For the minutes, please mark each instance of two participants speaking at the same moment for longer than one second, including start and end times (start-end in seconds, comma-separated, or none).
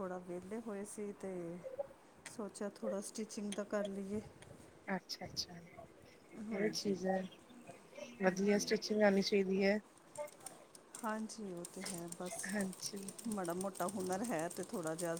none